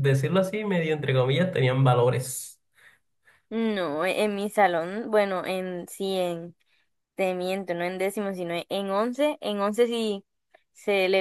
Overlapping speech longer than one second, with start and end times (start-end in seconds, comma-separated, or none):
none